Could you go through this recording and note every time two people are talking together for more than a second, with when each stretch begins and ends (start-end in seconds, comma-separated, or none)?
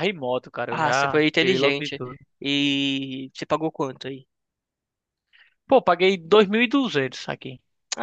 0.7-2.0